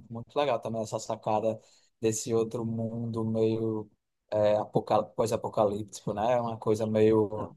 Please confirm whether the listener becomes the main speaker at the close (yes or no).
no